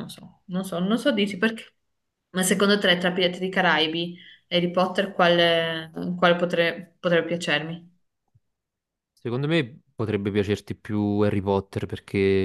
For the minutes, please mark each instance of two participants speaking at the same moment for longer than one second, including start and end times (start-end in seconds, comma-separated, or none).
none